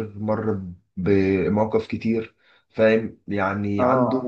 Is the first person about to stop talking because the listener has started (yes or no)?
no